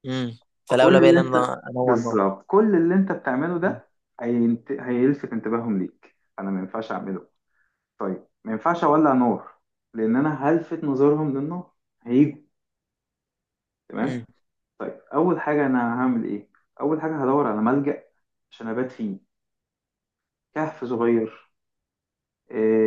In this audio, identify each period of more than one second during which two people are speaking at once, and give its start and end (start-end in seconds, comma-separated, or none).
0.7-2.2